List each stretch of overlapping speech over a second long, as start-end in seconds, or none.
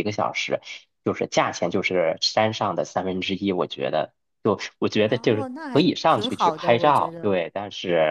5.0-7.3